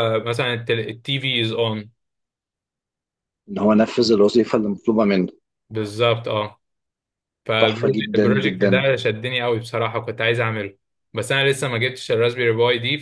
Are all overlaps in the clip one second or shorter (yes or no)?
no